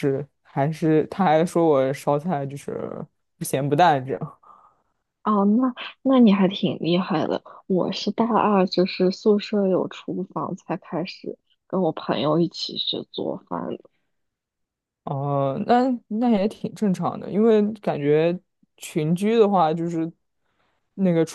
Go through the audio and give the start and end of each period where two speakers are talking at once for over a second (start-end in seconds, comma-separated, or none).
none